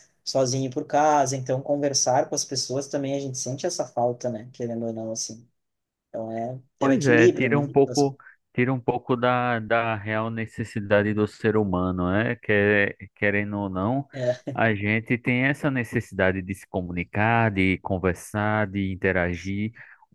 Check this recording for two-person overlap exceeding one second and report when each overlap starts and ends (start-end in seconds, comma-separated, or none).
6.8-8.1